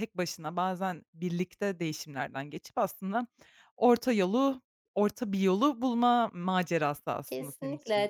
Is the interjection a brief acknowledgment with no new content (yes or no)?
no